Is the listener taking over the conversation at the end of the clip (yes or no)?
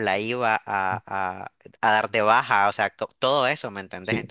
no